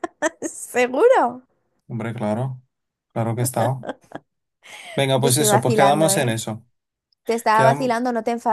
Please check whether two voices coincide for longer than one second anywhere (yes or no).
yes